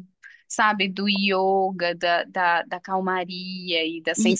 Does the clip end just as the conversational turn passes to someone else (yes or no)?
yes